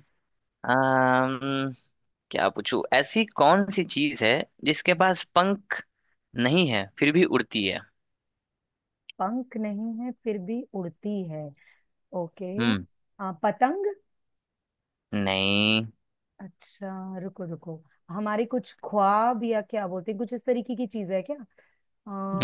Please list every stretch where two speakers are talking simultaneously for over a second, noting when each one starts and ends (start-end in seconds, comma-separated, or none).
none